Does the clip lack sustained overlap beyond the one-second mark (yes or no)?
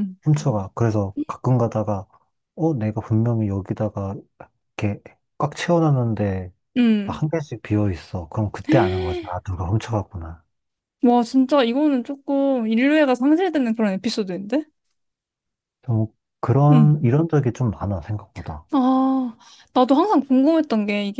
yes